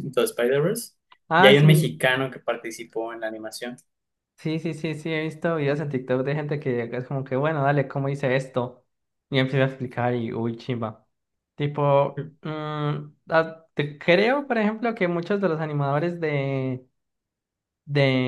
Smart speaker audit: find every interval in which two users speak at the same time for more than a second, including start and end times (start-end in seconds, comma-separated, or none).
none